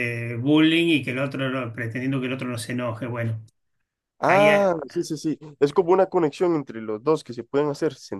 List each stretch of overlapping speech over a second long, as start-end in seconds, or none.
none